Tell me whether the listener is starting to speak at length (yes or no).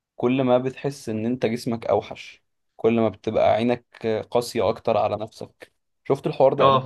yes